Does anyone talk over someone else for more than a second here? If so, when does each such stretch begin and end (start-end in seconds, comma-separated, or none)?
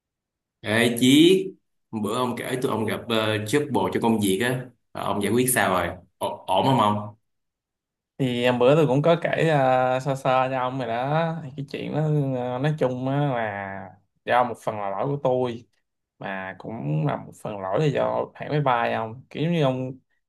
none